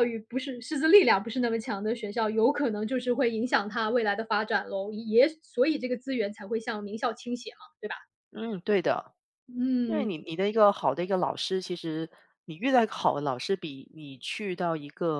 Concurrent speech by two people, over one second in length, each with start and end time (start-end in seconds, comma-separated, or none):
none